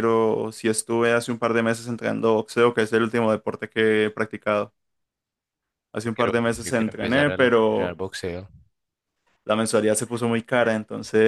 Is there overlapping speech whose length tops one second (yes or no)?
yes